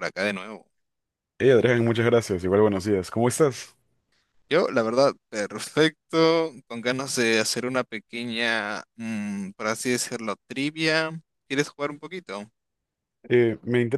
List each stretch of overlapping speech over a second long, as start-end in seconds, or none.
none